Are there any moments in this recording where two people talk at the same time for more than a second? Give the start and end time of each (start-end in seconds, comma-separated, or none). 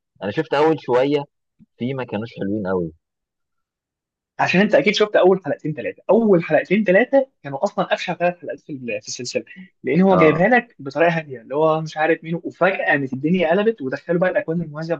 none